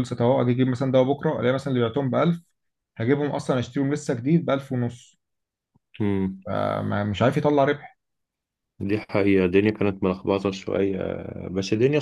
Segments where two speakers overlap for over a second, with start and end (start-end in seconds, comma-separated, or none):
none